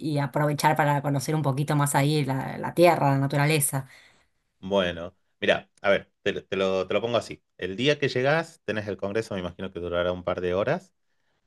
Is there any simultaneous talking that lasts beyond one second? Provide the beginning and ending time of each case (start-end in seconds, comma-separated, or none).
none